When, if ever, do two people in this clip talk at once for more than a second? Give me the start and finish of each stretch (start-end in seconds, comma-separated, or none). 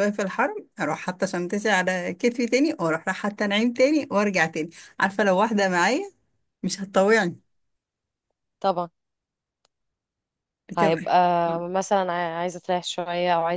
none